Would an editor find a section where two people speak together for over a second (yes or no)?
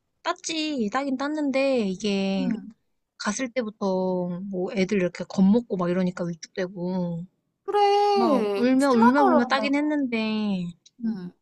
yes